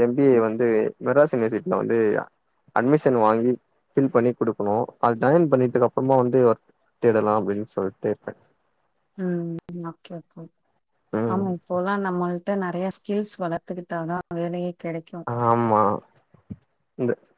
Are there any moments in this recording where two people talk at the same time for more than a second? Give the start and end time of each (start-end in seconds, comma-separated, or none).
none